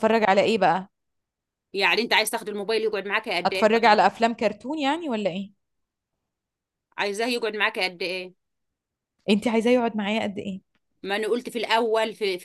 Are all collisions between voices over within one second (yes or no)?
yes